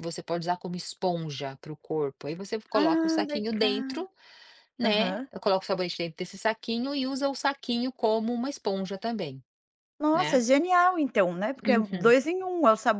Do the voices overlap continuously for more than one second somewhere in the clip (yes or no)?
yes